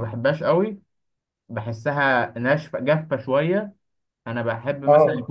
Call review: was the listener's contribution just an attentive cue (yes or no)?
yes